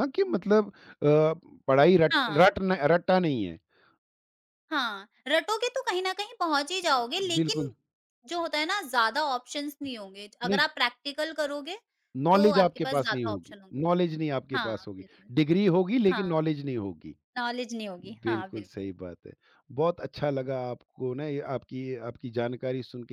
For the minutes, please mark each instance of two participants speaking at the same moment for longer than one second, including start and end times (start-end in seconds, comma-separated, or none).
12.3-13.9